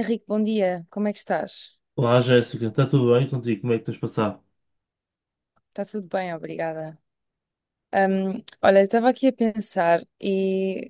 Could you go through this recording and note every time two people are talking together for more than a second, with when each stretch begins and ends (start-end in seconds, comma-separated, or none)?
none